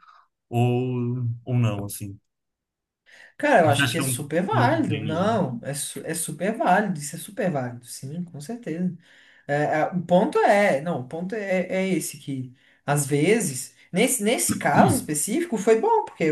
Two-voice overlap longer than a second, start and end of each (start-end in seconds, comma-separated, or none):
3.6-5.3